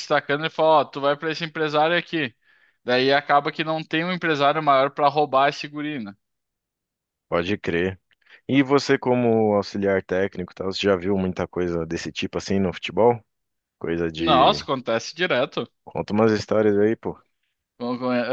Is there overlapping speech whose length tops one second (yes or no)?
no